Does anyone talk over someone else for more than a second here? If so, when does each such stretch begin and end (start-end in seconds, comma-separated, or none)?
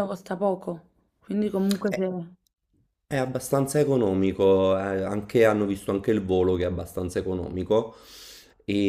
none